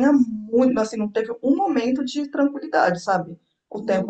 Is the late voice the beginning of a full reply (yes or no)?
no